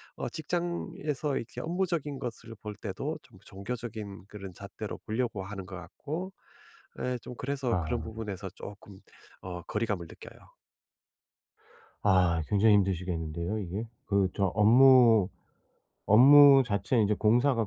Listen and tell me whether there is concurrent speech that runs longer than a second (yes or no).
no